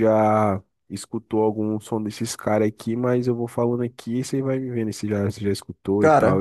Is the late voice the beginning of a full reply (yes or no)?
yes